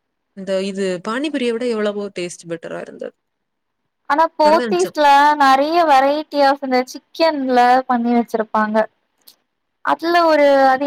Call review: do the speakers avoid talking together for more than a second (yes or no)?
yes